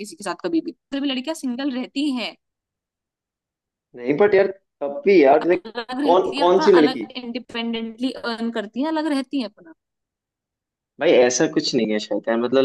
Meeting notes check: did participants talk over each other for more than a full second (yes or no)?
yes